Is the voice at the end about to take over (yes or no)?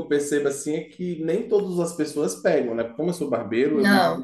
no